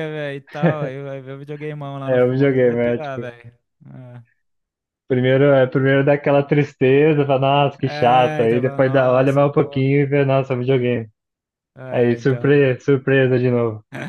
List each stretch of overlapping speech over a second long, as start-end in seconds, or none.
2.0-3.3, 7.8-9.8